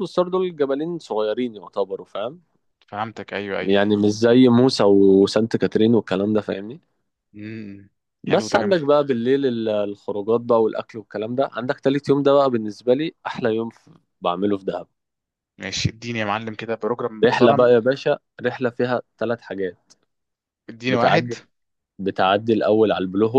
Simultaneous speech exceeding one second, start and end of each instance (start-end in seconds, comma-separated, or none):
none